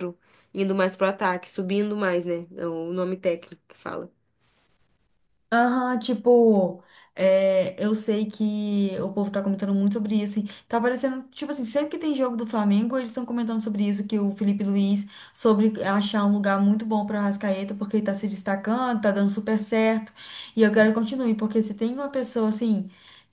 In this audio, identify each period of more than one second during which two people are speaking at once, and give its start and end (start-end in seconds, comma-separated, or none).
none